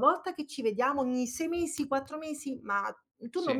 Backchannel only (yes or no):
yes